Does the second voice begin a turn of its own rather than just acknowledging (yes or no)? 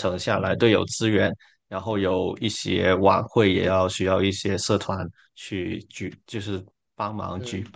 yes